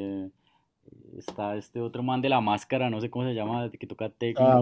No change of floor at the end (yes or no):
no